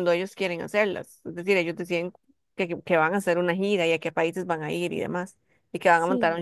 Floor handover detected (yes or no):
no